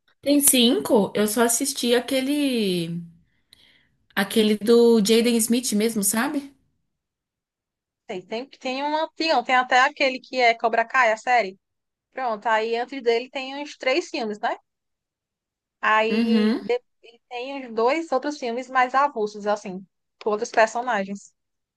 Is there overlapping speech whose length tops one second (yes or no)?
no